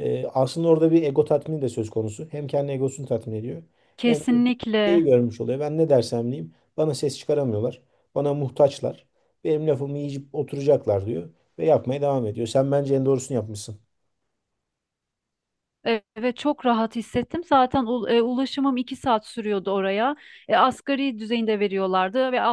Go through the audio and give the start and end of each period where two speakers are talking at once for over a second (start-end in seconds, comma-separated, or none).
none